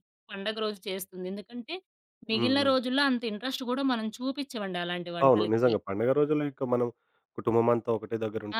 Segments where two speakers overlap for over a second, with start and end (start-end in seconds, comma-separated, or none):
none